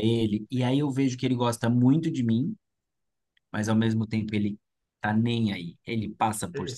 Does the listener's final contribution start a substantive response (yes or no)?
no